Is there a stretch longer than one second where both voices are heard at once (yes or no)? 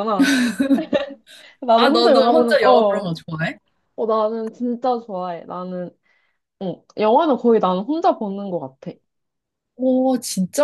yes